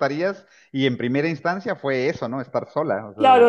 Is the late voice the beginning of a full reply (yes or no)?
yes